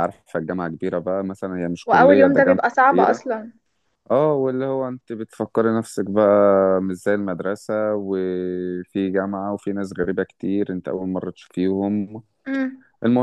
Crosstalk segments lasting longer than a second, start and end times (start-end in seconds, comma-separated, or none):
1.9-3.2